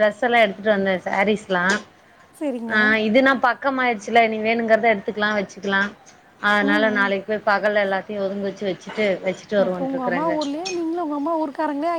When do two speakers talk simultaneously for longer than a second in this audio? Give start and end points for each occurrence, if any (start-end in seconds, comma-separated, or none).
none